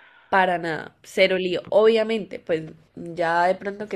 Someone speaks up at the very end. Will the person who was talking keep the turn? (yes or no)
yes